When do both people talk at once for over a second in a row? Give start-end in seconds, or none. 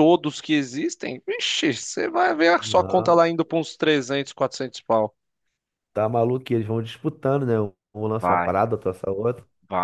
none